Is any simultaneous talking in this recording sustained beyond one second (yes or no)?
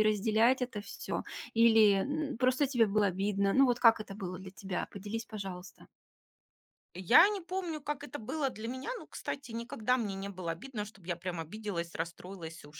no